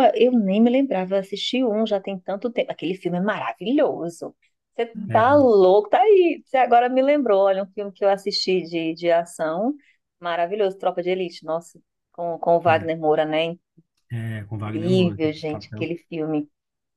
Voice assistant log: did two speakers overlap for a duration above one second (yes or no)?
yes